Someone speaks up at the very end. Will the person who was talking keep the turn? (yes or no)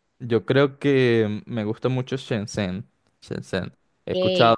yes